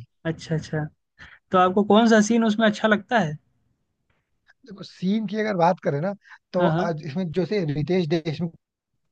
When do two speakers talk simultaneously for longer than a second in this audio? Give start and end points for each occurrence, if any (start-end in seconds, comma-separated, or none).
none